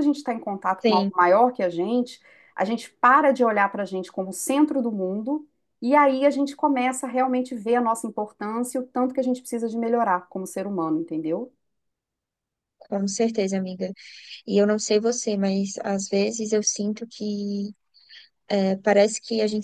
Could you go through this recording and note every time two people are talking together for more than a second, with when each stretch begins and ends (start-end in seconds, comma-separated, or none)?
none